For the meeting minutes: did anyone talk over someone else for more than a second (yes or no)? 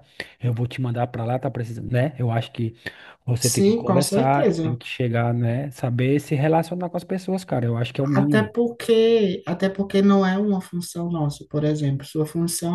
yes